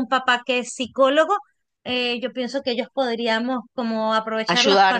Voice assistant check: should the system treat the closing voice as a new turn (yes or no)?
no